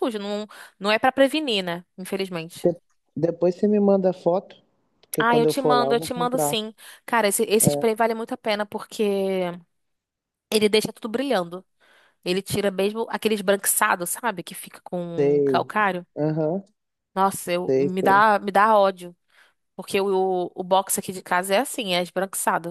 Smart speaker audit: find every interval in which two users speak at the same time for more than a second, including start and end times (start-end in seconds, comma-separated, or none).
5.2-6.6